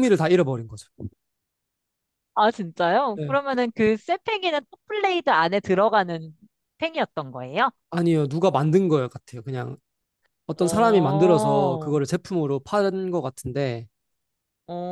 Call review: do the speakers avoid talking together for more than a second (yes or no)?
no